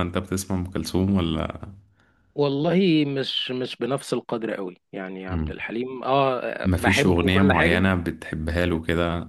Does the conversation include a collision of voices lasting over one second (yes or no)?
yes